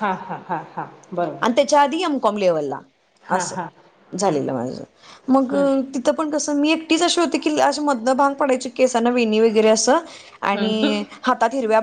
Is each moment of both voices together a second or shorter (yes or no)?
yes